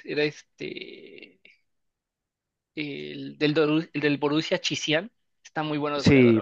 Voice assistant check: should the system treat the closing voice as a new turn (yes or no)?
yes